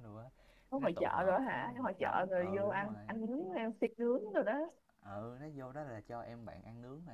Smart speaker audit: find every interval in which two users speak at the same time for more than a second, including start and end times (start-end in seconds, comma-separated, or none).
0.8-3.1